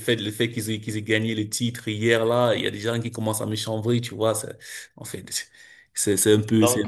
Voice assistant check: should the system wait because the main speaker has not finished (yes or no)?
yes